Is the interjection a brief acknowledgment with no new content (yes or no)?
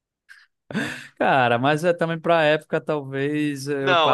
no